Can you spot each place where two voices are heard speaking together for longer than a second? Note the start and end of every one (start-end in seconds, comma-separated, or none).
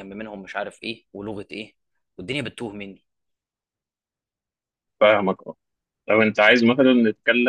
none